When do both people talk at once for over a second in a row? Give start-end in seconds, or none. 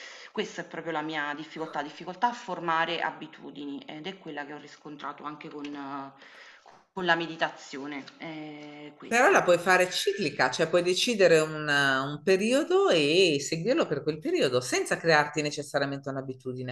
none